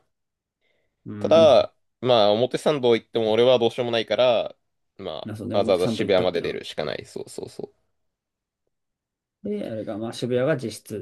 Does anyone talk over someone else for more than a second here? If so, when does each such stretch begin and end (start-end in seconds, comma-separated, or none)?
5.2-6.6